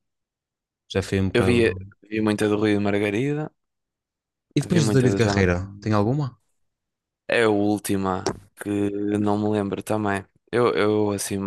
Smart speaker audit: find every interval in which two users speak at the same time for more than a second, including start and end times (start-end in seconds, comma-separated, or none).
4.7-5.9